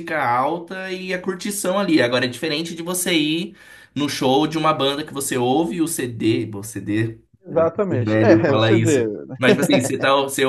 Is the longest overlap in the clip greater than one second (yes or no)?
yes